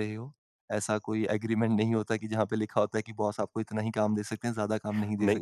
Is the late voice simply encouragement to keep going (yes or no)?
no